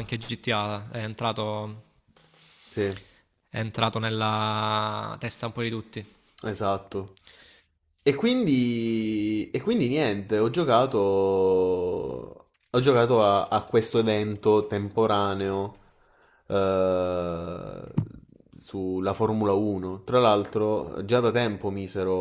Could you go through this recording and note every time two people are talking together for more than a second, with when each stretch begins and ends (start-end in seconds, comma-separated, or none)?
none